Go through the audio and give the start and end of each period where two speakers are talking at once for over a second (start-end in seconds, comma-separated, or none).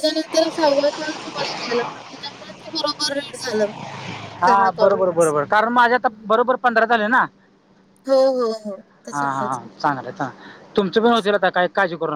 none